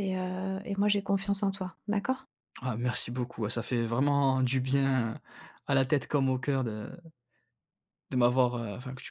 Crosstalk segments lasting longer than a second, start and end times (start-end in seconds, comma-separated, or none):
none